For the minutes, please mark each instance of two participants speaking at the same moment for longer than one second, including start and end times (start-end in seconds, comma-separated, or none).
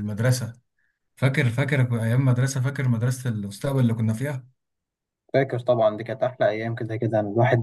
none